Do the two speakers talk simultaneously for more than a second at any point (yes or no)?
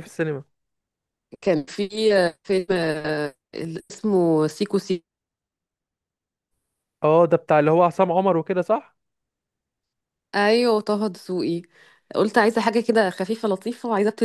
no